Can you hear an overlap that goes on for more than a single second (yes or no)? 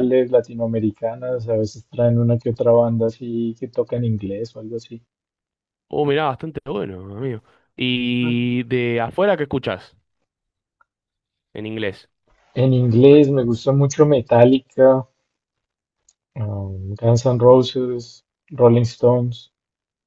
no